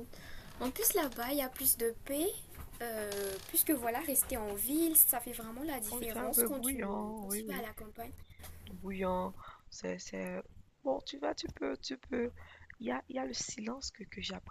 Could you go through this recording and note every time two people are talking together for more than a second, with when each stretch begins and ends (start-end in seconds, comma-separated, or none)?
5.9-7.7